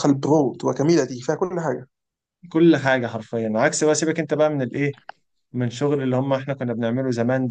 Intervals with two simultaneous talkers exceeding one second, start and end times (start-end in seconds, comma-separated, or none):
none